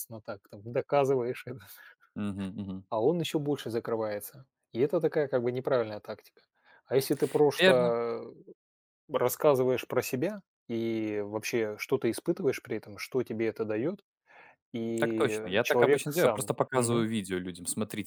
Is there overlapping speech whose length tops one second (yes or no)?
yes